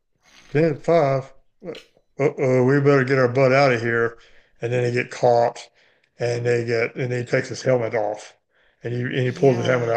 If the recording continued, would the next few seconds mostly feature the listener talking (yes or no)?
no